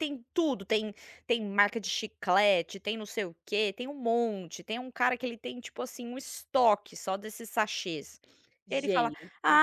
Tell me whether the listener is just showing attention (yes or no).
yes